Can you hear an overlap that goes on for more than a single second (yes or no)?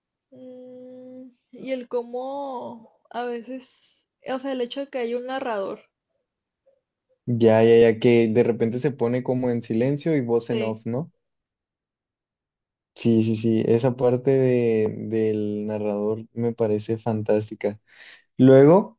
no